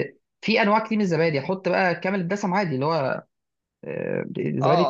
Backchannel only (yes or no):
no